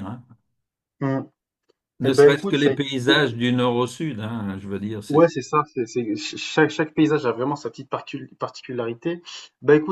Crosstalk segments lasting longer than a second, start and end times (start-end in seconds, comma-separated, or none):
2.0-3.2